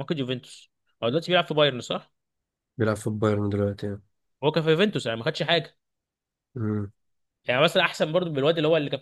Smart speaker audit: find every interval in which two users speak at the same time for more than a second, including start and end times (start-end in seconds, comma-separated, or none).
none